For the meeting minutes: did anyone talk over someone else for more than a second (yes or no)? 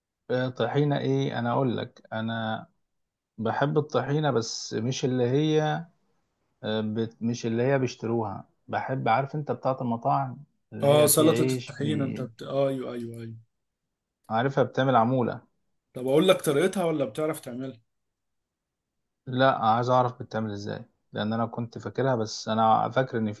yes